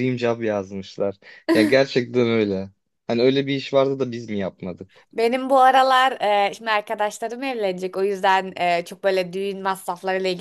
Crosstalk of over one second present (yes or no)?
no